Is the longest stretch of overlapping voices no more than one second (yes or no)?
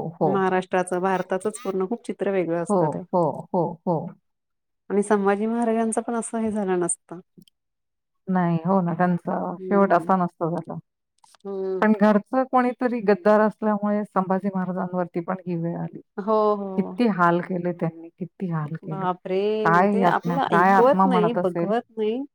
no